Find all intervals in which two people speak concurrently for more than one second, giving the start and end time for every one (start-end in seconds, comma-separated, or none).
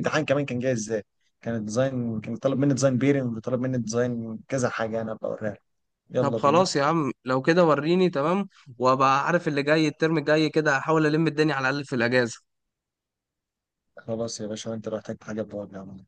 none